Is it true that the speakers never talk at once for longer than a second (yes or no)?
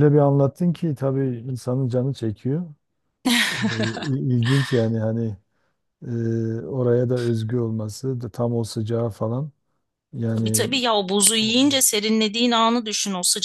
yes